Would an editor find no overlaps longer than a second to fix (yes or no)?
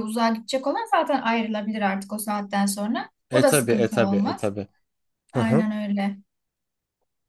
no